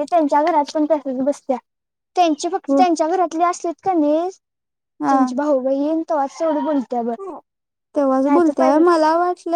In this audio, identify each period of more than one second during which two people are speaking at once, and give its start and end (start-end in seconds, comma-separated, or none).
none